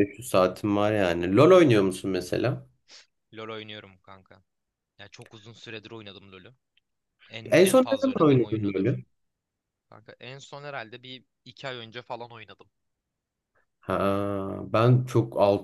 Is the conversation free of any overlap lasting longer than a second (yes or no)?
no